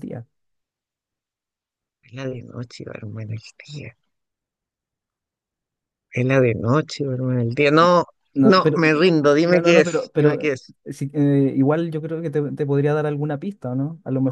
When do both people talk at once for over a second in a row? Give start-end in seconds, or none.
9.4-10.7